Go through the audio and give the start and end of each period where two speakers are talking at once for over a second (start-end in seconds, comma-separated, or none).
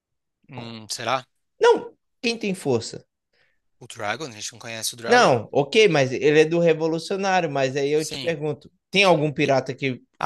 none